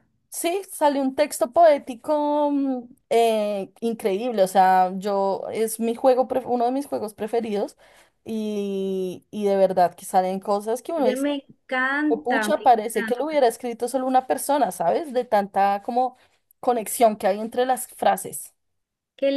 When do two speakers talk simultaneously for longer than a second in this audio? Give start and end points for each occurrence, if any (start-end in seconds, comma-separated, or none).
12.1-13.4